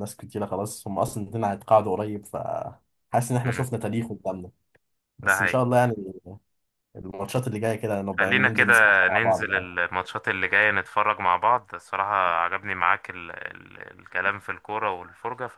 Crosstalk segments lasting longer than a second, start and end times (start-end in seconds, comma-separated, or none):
8.2-9.7